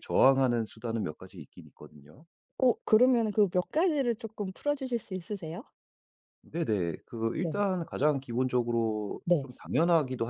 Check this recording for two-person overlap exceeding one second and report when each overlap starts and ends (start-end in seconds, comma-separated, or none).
none